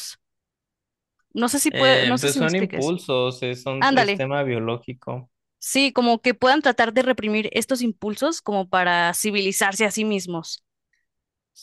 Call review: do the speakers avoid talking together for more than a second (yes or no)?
no